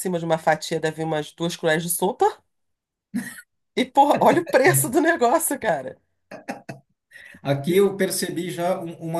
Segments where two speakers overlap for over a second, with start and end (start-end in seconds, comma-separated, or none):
none